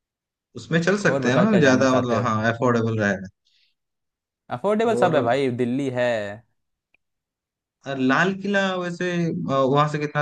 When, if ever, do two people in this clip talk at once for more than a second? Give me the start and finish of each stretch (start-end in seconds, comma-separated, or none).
1.0-2.3